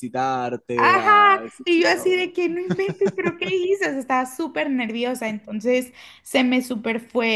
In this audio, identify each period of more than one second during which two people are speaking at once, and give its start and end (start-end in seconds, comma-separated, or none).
0.7-2.2